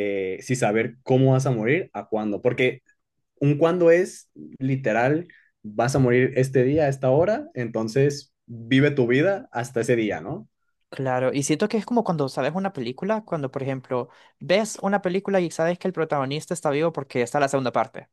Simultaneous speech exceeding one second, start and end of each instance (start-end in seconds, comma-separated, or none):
none